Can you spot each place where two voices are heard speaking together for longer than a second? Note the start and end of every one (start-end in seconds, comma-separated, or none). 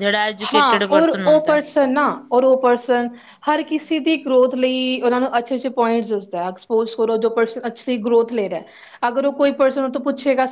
none